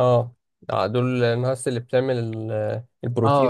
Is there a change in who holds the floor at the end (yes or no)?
yes